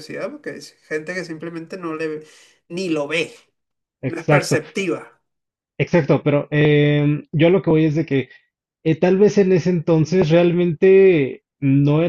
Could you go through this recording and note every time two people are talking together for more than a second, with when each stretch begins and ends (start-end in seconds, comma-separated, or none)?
none